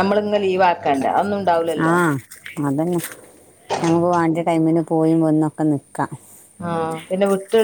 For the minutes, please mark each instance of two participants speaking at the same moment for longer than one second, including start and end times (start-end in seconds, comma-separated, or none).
none